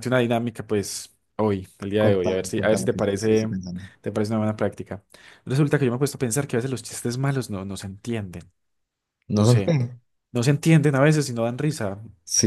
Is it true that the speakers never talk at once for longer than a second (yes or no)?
no